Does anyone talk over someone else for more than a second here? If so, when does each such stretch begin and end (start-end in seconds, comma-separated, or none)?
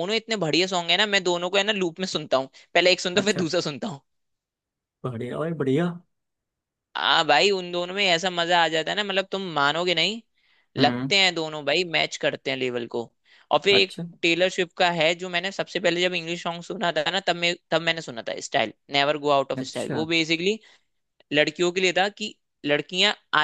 none